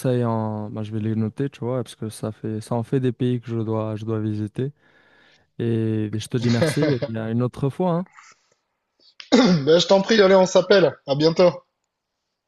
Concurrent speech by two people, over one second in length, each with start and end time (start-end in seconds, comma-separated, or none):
none